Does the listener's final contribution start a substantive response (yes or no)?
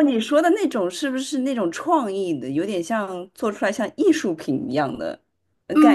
yes